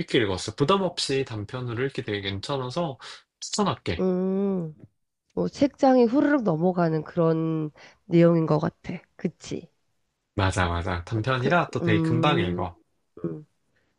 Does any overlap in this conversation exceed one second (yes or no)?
yes